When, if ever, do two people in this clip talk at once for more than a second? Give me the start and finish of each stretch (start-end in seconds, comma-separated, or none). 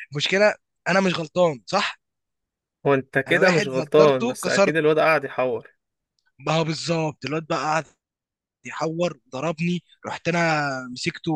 3.3-4.8